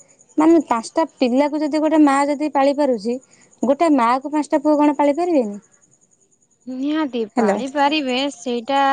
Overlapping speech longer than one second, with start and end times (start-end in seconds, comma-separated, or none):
none